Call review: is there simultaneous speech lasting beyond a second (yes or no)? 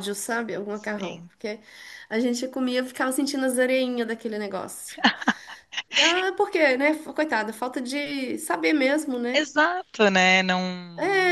no